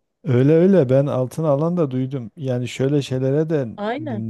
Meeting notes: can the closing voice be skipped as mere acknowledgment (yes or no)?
yes